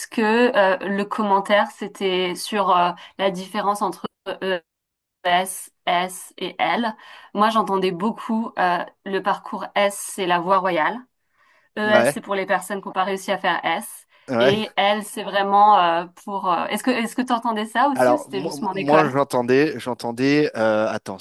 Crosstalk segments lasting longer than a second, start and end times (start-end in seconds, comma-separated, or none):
17.9-19.1